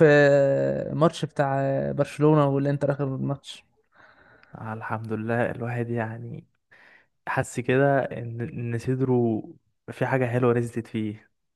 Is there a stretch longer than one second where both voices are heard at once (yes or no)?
no